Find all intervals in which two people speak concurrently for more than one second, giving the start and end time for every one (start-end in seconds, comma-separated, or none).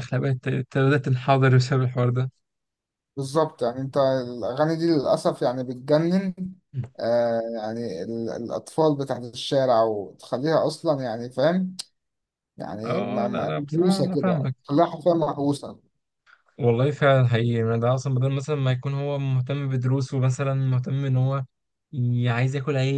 12.8-14.6